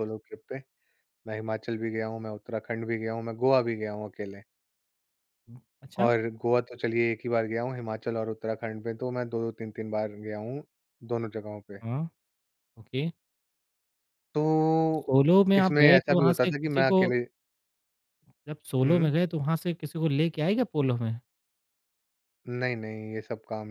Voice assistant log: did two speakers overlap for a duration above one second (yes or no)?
yes